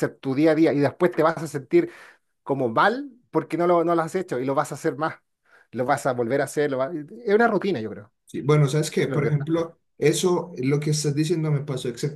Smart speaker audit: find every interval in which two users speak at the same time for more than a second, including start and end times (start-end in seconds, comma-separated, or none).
none